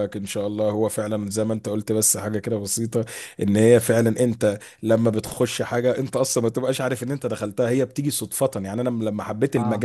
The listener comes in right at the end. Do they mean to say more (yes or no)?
no